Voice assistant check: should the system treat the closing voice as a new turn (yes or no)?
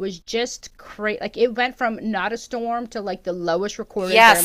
yes